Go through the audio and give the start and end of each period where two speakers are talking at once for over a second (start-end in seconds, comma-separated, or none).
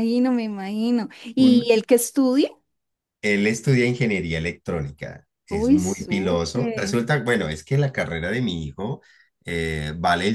5.5-7.0